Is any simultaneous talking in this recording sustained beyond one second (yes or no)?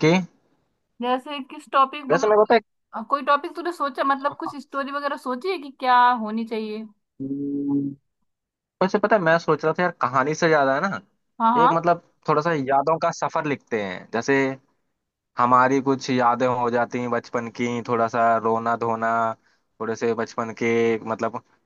no